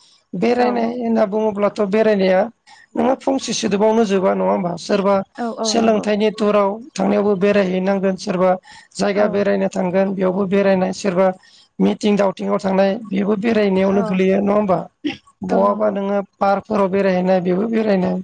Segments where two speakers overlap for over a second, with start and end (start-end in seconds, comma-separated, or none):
none